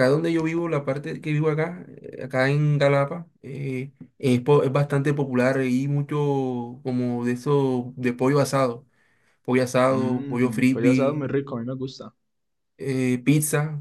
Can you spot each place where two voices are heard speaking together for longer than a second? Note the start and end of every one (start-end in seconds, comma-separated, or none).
9.9-11.2